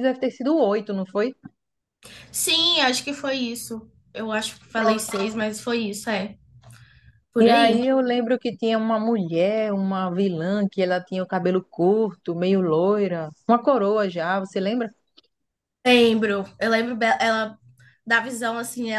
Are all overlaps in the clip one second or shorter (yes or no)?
yes